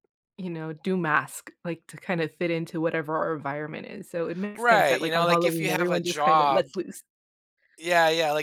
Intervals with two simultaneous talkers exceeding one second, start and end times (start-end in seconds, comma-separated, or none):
4.6-6.7